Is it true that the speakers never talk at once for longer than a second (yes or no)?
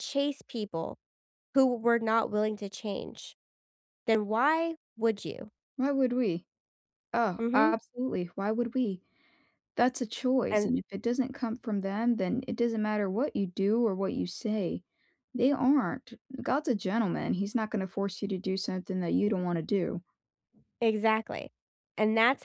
yes